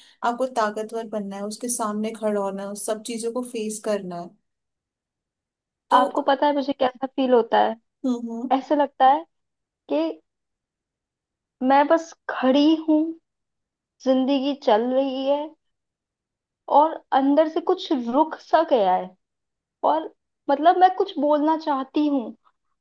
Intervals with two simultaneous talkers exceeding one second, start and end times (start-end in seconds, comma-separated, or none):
none